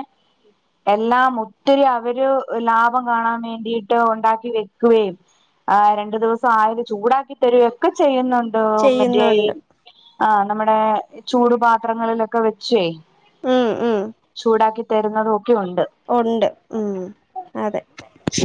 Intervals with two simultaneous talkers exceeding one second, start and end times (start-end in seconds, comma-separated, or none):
none